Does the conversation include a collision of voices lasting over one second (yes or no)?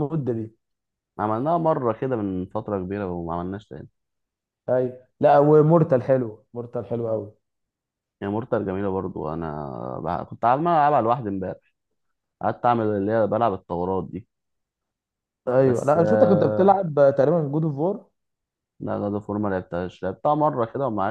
yes